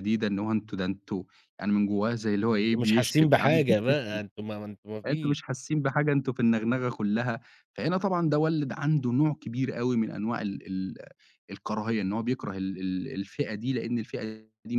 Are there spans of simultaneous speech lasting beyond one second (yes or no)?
yes